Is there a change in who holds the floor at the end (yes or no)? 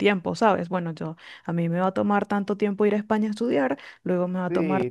yes